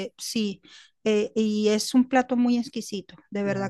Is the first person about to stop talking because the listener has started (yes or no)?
no